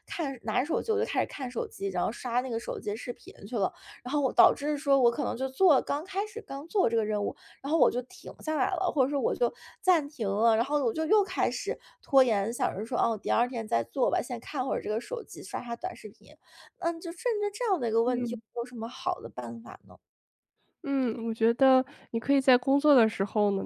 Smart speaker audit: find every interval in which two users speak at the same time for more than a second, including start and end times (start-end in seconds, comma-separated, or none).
none